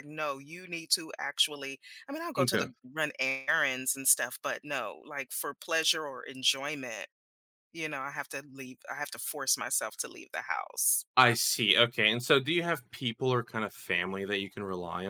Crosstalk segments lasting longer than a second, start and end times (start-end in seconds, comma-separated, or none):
none